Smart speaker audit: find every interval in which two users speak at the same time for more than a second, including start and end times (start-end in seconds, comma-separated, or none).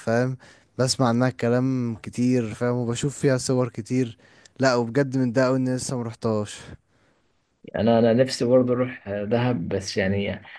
none